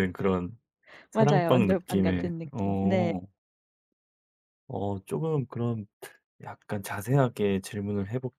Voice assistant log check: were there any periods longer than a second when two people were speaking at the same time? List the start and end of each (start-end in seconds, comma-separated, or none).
1.1-3.1